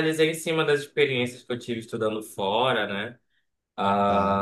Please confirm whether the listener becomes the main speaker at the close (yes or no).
no